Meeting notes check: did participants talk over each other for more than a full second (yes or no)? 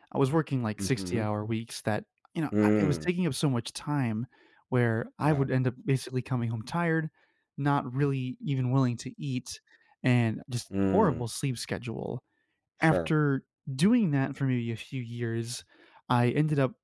no